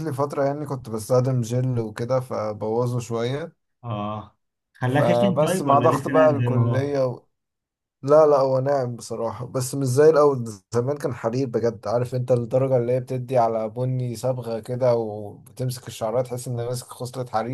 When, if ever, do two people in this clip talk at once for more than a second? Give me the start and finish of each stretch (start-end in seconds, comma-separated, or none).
4.9-6.9